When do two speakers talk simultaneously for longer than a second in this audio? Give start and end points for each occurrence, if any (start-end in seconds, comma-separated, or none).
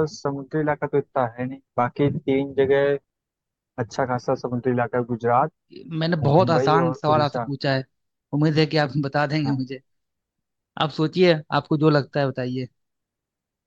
6.2-7.5